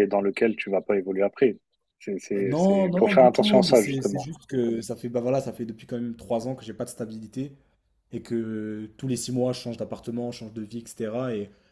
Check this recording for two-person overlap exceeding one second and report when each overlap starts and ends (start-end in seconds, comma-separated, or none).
2.4-4.3